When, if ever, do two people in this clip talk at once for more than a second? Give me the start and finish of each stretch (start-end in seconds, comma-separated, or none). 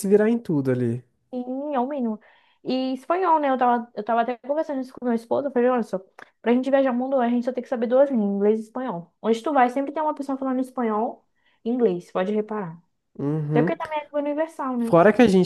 none